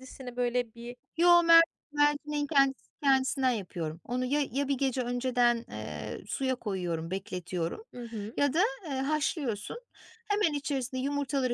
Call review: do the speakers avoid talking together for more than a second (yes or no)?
yes